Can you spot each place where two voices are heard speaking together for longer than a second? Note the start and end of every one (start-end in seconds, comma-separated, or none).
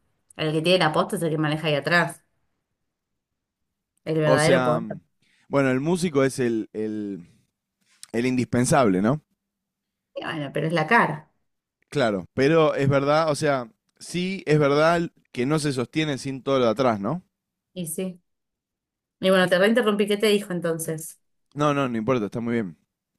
none